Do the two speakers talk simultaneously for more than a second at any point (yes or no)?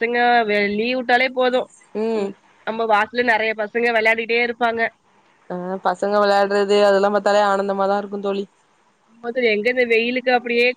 no